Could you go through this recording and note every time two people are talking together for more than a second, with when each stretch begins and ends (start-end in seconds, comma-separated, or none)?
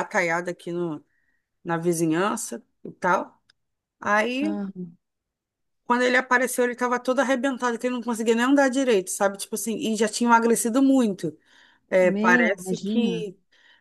12.0-13.2